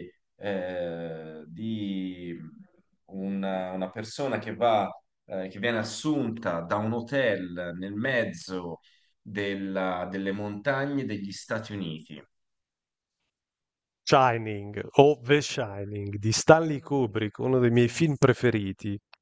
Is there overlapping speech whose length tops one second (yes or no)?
no